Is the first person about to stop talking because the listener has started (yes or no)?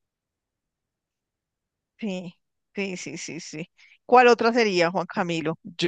yes